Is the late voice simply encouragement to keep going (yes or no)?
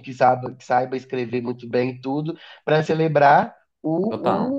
yes